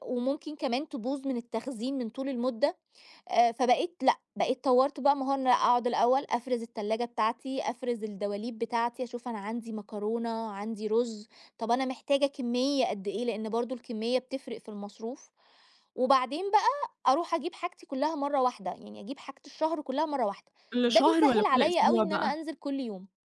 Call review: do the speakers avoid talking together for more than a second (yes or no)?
no